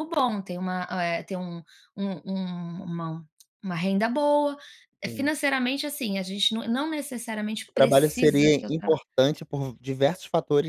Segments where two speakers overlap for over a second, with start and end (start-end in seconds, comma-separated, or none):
7.7-9.0